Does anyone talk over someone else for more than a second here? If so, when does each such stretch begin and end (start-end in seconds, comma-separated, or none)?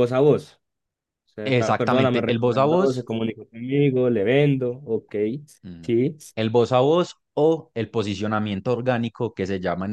1.4-3.1